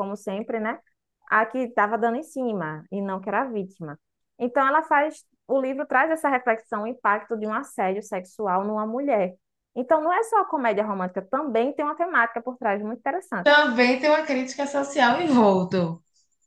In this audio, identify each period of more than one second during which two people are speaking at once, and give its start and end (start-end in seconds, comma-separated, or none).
none